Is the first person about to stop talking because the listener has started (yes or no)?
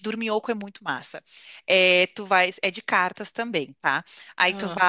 no